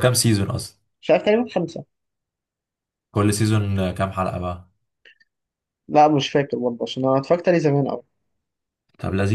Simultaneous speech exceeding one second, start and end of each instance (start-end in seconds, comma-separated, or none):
none